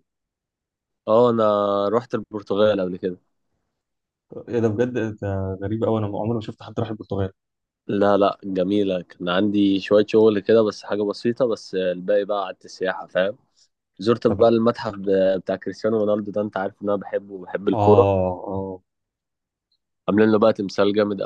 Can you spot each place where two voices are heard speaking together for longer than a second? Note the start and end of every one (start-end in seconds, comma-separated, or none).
none